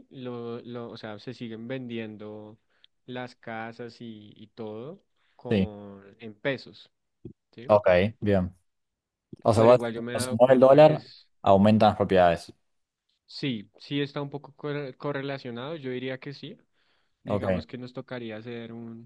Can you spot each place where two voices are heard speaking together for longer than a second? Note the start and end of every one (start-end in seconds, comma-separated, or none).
9.5-11.0